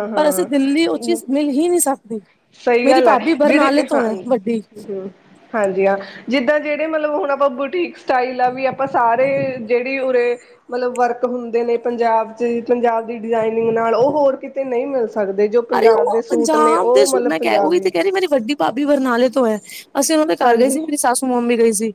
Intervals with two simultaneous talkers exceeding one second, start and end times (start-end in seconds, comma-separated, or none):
2.8-4.6, 15.8-17.9